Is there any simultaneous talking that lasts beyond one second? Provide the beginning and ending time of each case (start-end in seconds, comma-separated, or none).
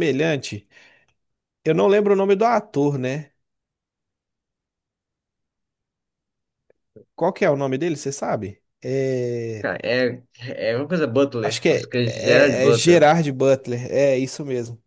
11.4-13.1